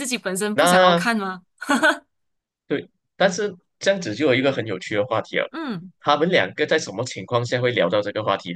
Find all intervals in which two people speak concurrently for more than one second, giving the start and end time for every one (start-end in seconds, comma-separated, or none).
none